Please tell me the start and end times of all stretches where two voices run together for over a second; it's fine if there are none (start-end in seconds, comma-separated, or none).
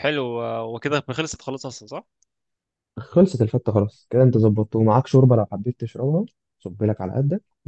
none